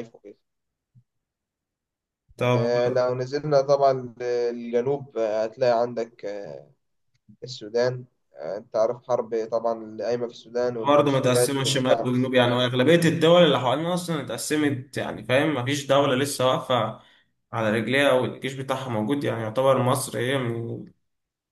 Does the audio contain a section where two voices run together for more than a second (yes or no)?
yes